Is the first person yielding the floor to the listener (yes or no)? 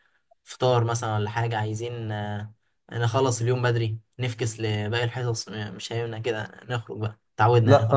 yes